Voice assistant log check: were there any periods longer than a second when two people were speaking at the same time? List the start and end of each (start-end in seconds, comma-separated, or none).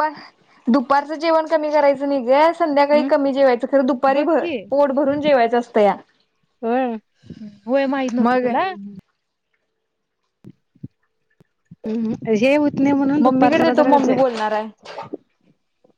13.2-14.8